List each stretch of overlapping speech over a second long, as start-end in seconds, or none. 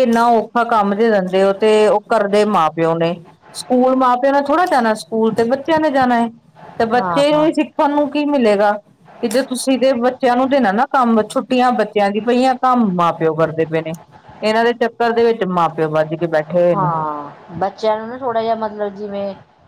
none